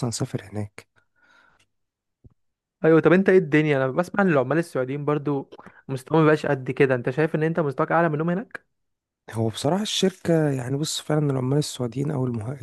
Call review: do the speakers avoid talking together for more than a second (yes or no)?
yes